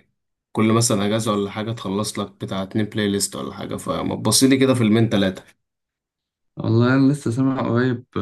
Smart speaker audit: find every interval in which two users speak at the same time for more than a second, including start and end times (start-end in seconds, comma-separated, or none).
none